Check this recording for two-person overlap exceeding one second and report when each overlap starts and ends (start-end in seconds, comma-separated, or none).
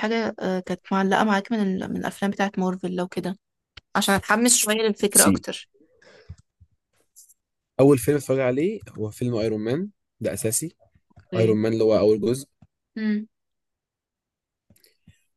none